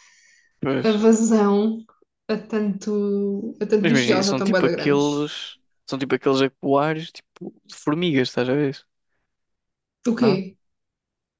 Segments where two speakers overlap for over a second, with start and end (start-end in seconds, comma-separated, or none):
3.8-5.3